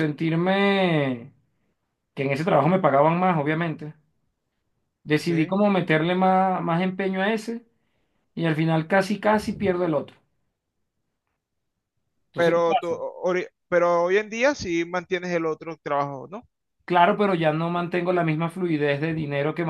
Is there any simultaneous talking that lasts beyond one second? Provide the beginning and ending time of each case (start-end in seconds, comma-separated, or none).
none